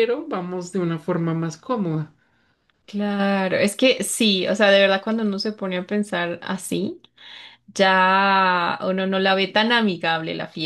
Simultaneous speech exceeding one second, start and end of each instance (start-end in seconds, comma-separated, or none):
none